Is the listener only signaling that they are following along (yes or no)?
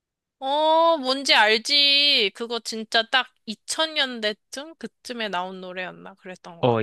no